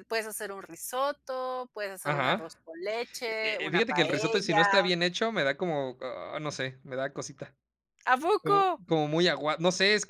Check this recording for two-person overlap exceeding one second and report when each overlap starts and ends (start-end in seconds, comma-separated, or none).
3.3-4.6